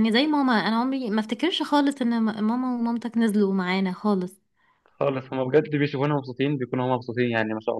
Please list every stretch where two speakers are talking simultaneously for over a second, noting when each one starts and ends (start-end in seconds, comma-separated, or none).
none